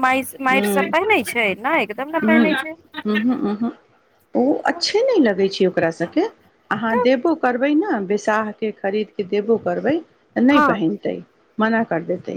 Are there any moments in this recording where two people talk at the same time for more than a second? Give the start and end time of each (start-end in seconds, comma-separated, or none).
none